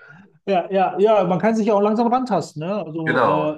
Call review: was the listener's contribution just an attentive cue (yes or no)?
yes